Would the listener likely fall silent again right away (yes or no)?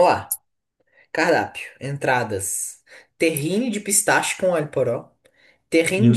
yes